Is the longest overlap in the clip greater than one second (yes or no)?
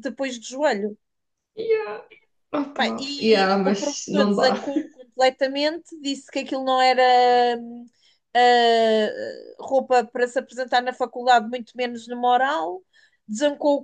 yes